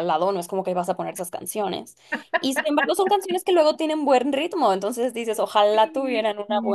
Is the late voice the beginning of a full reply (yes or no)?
yes